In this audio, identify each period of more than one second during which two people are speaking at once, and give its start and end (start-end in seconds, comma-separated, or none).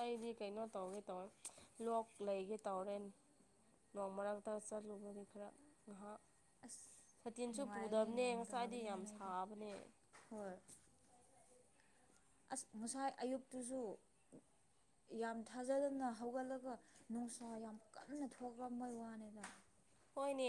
7.5-9.3